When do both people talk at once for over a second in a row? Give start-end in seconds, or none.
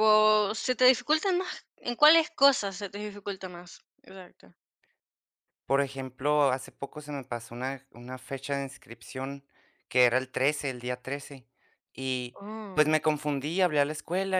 none